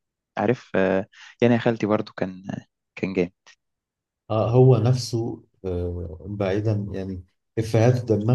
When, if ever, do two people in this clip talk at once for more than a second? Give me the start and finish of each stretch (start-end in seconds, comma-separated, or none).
none